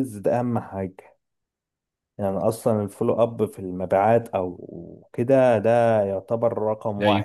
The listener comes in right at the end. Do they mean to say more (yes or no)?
no